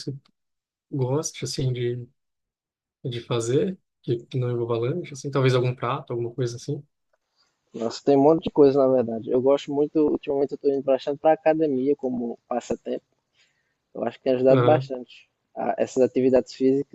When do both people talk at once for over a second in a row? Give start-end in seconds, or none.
none